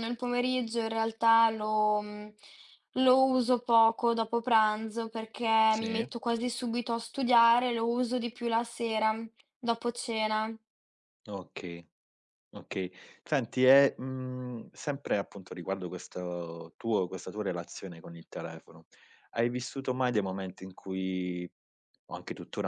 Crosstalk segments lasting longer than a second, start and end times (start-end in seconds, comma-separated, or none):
none